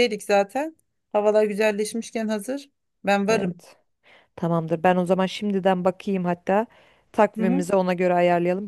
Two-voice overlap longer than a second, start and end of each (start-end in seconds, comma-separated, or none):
none